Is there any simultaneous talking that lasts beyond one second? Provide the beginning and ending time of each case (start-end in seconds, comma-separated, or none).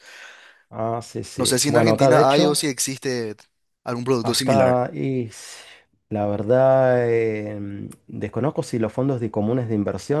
1.4-2.6